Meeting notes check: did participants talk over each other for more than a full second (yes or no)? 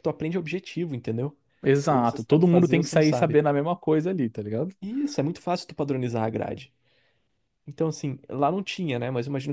yes